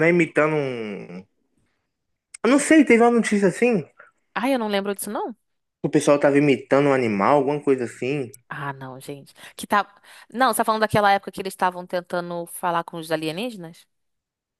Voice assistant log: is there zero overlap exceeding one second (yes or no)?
yes